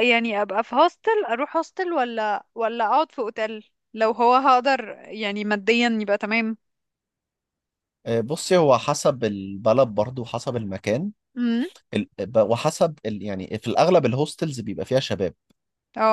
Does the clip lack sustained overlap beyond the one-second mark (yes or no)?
yes